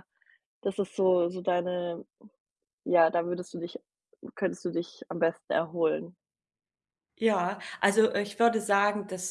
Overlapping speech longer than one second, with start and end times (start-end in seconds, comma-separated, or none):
none